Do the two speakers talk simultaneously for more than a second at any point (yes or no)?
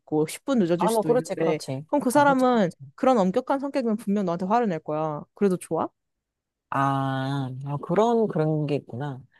yes